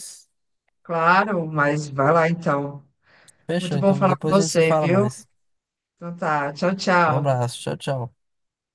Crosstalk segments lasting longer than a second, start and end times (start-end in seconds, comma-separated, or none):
3.6-5.1